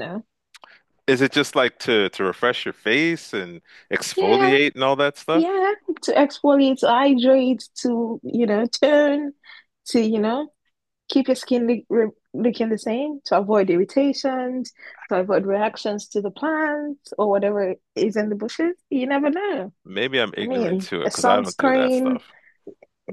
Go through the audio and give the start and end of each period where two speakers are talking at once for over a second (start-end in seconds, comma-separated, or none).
20.4-22.2